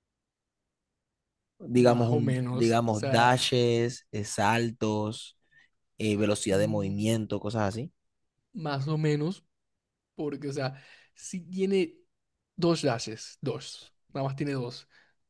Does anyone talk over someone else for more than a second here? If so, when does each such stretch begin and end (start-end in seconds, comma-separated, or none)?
1.7-3.4